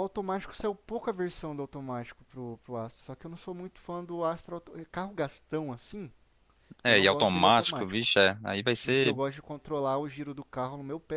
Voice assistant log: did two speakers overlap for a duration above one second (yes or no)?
yes